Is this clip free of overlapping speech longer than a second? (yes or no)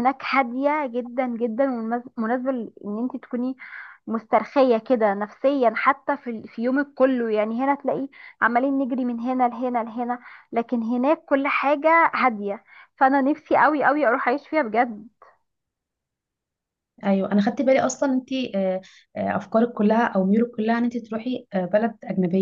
yes